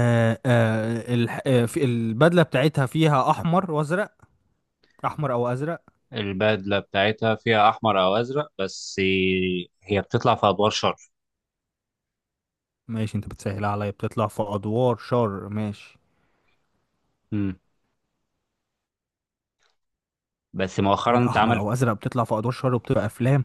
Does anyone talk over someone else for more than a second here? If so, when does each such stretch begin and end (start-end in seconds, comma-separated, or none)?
none